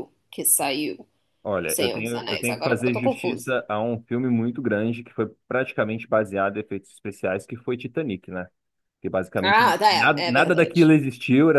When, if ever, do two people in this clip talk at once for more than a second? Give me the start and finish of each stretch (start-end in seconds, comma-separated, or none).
1.6-3.6, 9.4-10.9